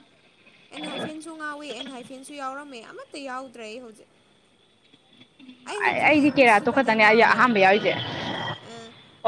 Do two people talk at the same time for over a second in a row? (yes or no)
yes